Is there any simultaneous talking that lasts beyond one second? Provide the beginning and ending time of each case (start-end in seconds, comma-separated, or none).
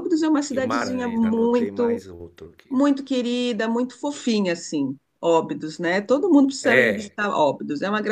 0.5-2.0